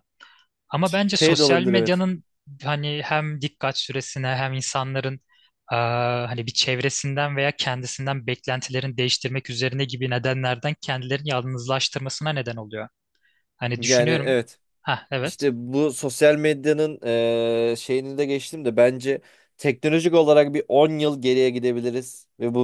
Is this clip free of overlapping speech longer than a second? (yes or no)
no